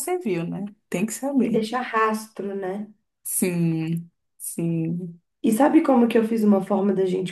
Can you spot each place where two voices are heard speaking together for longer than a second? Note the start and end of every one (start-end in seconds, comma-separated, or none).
none